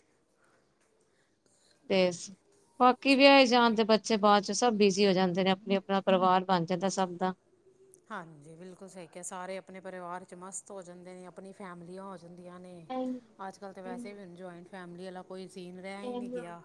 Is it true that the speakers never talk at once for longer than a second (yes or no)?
yes